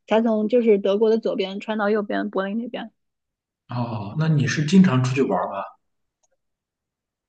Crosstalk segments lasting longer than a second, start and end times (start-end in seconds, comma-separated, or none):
none